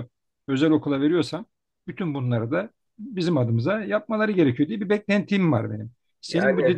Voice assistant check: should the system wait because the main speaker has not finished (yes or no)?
yes